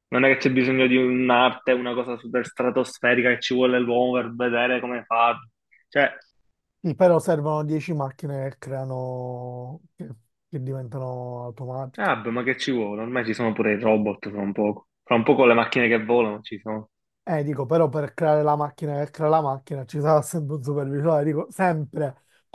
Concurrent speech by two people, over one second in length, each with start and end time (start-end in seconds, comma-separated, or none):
none